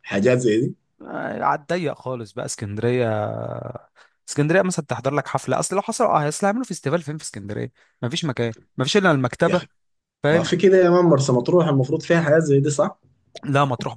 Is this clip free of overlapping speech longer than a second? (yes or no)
yes